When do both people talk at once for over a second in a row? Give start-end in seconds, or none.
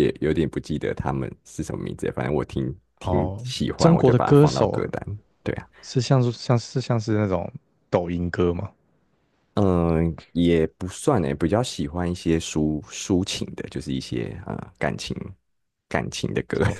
3.0-4.8